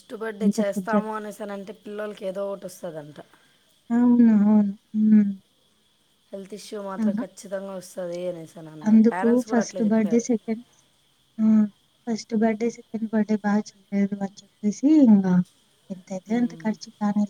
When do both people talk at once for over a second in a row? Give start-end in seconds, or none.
none